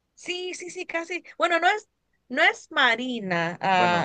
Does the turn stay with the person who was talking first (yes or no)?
no